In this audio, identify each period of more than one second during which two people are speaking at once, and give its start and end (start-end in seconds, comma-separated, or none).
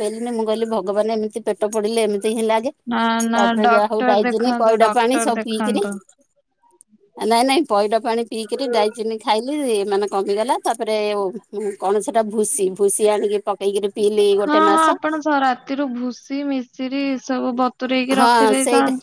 3.4-5.8